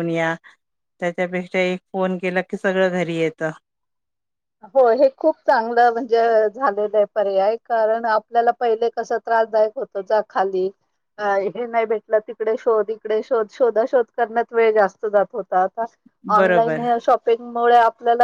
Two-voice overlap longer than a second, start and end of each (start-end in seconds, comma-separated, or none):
none